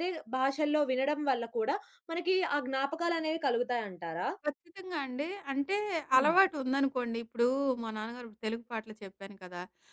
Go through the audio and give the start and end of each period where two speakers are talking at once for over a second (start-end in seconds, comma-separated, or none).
none